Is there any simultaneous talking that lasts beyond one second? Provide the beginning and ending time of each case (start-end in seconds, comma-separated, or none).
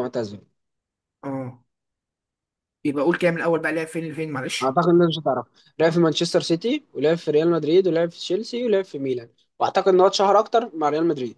none